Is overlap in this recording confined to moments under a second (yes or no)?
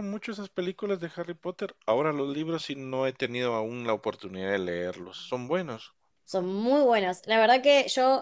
yes